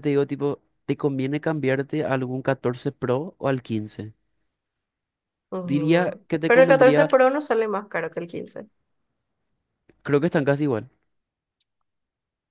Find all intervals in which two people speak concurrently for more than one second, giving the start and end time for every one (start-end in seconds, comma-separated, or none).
5.6-7.2